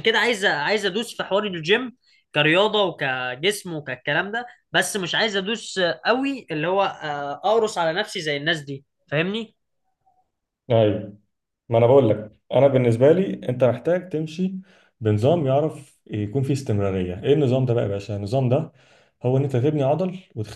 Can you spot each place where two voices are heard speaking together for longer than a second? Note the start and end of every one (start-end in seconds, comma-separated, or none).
none